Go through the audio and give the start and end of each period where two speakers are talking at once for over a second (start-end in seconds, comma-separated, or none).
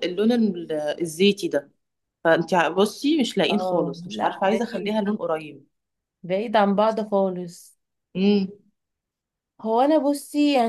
3.5-5.0